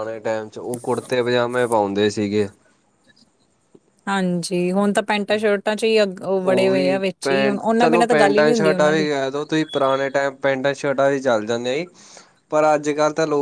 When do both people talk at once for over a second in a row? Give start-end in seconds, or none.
6.5-9.1